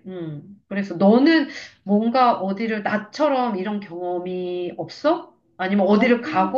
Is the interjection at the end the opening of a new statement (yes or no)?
no